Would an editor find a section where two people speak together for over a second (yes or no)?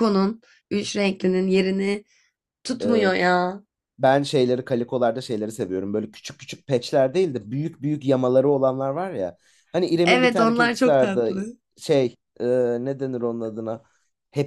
yes